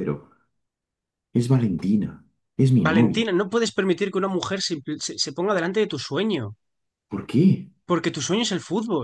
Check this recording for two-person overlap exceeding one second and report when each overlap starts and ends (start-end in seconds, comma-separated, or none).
none